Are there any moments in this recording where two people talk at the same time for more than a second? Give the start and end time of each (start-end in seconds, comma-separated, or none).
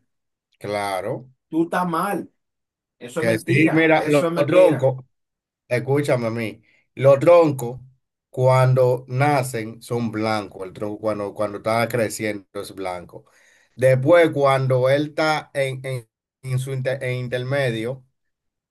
3.2-4.9